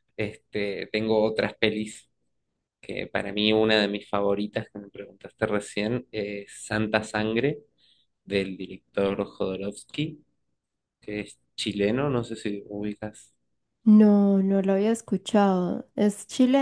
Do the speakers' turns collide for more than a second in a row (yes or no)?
no